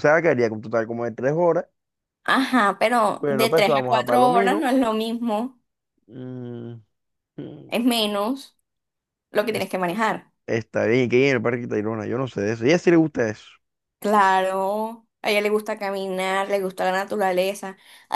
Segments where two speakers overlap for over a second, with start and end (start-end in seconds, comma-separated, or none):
3.2-4.7